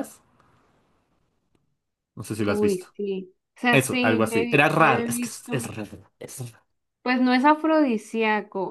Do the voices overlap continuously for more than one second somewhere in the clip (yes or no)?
yes